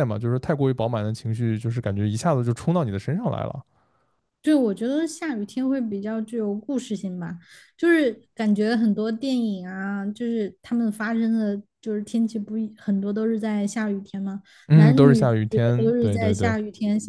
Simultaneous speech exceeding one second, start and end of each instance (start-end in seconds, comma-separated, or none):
14.7-16.6